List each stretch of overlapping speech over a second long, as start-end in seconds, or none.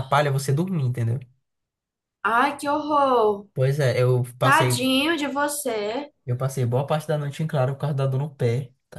none